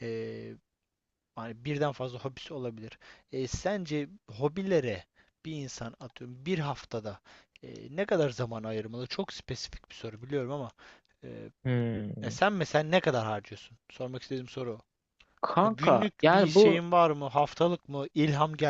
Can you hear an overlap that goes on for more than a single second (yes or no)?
yes